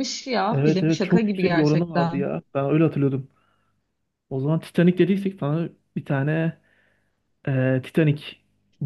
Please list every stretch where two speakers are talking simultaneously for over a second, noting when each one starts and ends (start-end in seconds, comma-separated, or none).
0.5-2.3